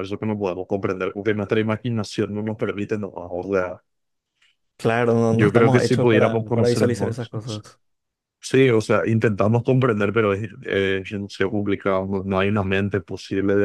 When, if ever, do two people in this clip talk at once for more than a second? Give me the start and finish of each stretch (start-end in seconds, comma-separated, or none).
5.3-7.2